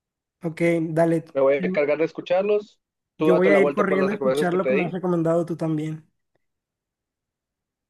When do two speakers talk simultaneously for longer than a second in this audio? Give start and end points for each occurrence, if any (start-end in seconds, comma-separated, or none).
3.2-4.9